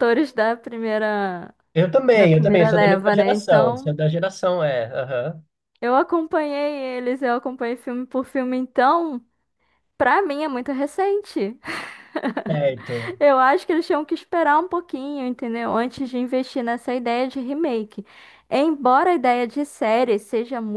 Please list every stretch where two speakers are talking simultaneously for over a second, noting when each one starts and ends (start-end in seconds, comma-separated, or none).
2.1-3.9